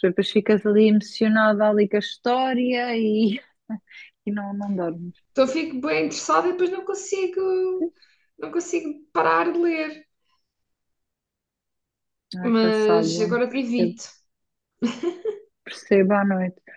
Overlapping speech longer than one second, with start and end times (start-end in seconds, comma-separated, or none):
12.4-14.0